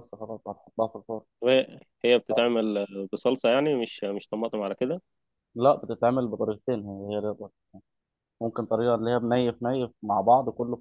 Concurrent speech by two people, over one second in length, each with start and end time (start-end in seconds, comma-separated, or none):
none